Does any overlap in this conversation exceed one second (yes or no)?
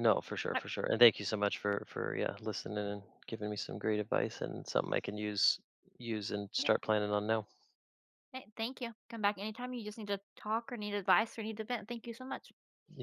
no